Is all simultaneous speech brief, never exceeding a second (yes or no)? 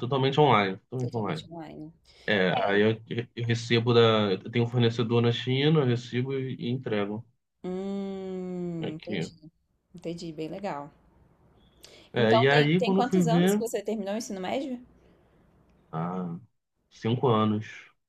no